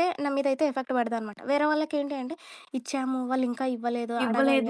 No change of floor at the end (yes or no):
no